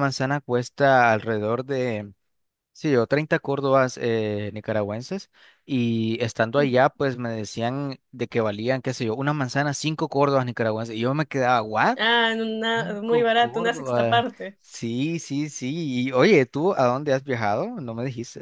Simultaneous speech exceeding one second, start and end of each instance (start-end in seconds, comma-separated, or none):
12.7-14.6